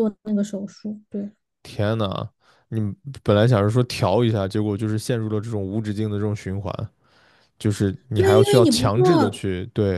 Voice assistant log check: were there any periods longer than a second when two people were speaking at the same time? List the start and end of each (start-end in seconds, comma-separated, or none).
8.1-9.4